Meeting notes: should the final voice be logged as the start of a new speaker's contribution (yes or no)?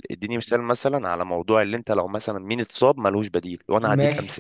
yes